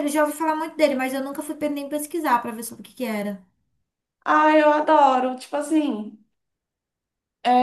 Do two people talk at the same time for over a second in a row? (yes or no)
no